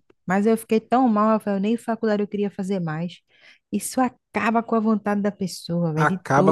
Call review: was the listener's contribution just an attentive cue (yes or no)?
no